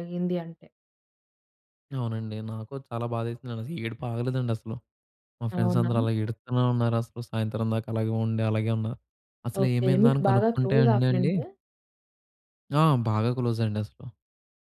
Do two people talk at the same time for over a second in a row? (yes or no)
yes